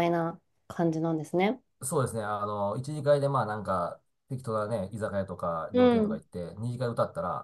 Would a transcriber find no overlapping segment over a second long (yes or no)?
yes